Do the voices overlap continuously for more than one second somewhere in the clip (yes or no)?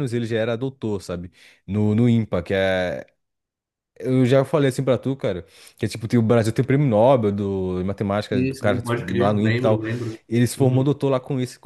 yes